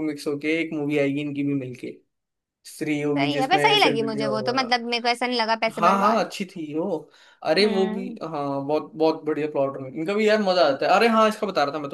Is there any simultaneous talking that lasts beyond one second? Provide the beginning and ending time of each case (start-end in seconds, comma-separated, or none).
3.1-4.5